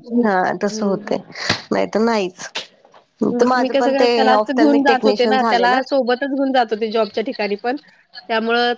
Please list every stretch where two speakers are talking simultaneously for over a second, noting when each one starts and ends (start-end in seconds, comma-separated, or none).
3.4-5.7